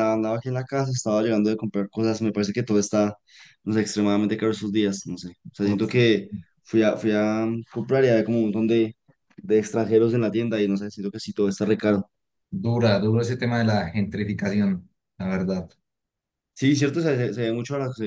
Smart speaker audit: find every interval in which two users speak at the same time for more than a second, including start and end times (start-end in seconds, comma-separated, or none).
none